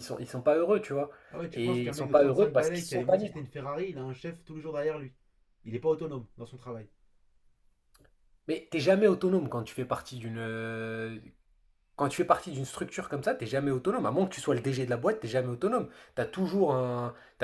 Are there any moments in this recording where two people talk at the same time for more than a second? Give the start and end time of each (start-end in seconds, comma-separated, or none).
1.5-3.5